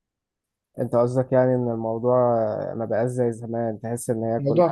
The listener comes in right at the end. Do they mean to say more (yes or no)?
yes